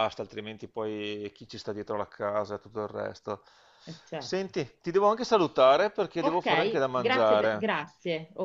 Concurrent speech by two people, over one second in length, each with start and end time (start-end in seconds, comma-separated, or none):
6.2-7.7